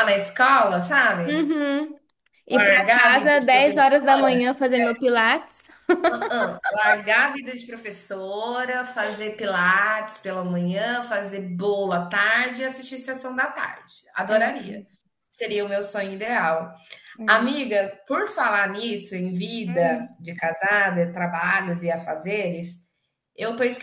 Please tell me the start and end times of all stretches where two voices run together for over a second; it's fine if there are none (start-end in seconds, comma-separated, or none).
2.6-4.3